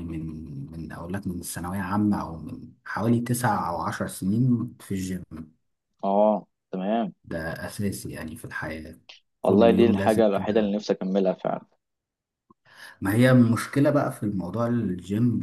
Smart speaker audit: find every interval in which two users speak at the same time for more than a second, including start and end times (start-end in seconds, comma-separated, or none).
9.4-10.8